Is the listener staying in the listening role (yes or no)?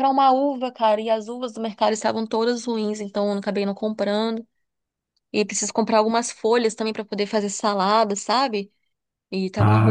yes